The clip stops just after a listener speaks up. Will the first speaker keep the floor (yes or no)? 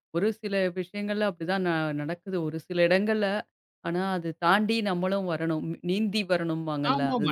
no